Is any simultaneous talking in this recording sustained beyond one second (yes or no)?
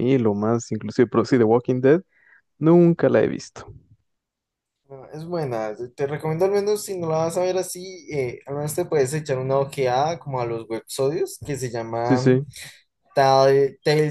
no